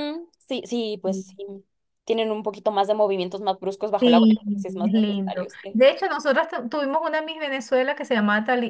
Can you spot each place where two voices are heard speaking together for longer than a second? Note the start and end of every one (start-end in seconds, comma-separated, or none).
4.0-5.8